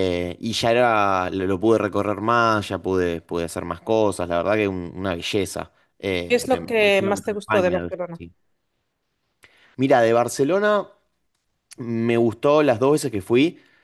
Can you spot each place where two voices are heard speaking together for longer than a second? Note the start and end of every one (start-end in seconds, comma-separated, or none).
6.3-7.9